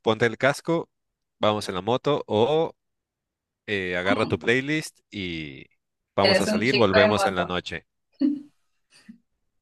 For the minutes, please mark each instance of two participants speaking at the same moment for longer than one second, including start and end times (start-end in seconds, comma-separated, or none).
6.2-7.5